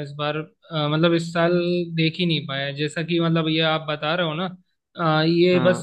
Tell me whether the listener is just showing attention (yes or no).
yes